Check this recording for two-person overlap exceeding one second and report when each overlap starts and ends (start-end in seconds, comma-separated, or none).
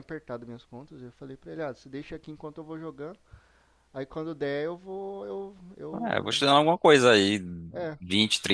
none